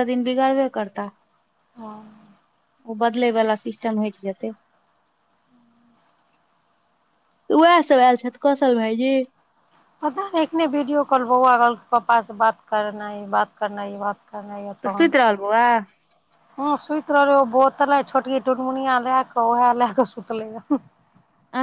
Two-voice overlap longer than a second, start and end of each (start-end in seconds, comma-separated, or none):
none